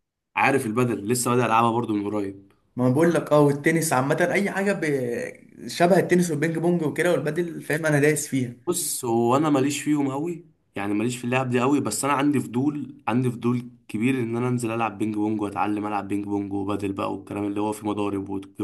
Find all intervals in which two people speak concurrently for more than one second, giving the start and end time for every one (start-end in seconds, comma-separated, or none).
none